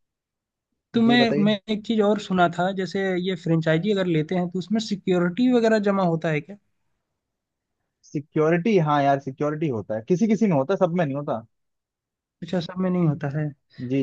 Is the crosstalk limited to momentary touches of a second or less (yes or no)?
yes